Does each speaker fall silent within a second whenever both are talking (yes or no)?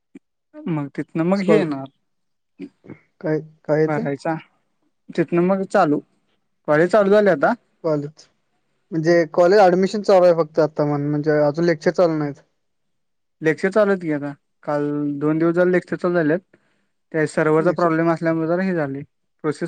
yes